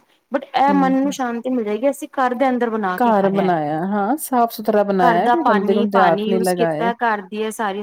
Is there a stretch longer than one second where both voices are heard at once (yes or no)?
yes